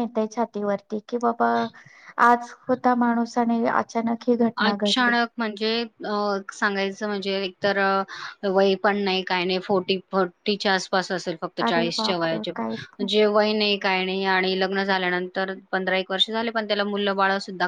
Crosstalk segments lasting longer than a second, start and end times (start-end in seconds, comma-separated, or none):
11.7-13.1